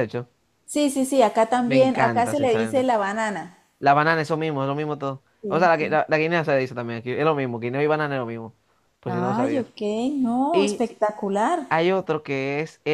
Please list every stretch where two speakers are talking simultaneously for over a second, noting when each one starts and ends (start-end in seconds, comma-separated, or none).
1.6-2.9